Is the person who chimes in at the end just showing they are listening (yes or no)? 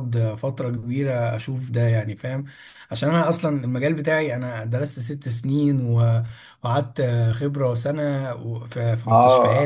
no